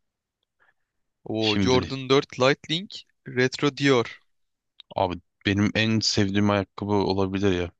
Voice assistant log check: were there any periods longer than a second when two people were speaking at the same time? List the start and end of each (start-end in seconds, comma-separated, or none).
none